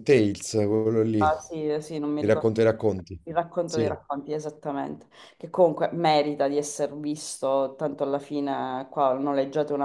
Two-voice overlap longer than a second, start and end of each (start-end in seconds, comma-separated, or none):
1.2-2.5